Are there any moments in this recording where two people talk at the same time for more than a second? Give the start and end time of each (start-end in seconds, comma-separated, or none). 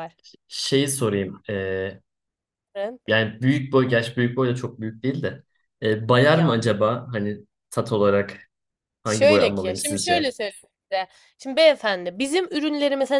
9.1-10.3